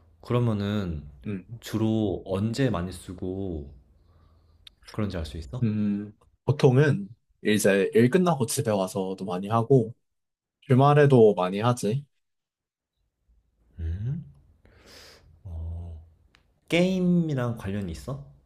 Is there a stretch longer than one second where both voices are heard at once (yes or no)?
no